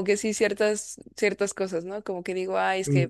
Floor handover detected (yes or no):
no